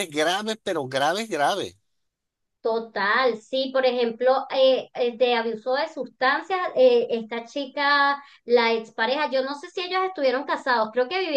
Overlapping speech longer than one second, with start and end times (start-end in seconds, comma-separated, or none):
none